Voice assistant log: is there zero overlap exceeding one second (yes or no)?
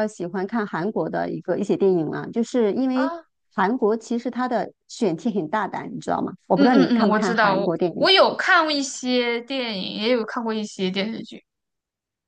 no